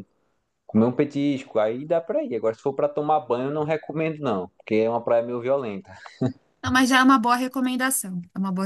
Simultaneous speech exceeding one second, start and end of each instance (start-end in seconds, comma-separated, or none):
none